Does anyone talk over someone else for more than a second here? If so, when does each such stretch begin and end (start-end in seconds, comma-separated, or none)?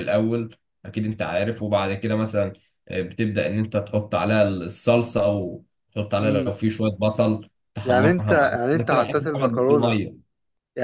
7.8-10.0